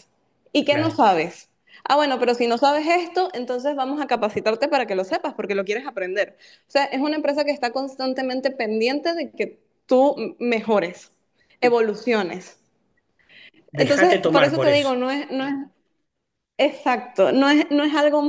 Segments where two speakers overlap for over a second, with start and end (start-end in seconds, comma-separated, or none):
13.7-14.9